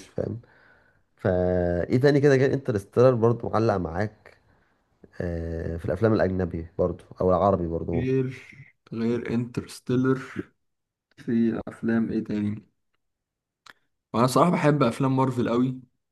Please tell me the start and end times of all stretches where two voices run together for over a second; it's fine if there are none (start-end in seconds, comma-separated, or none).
none